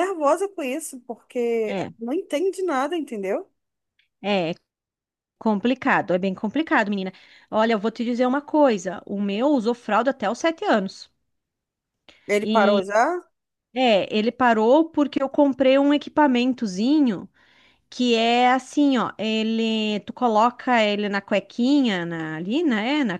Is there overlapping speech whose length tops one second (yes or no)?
no